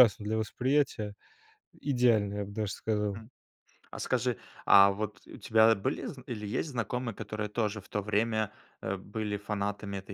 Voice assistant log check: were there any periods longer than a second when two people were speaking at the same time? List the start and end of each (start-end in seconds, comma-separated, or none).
none